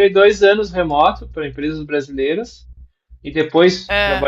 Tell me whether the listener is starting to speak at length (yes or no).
no